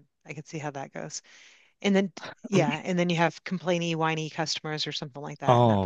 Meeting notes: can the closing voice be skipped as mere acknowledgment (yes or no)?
no